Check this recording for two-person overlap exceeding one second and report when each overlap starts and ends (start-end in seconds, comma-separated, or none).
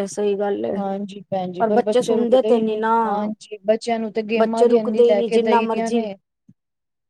4.4-6.0